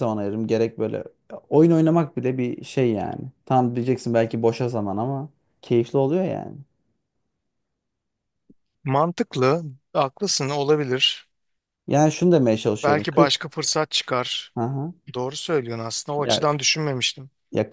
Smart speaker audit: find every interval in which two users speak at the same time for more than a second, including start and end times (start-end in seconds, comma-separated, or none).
none